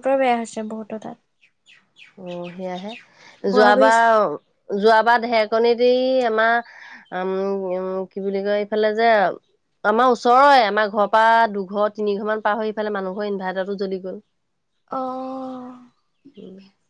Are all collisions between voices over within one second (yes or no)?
yes